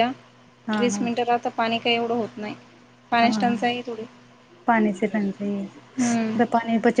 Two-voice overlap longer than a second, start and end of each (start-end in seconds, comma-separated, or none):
none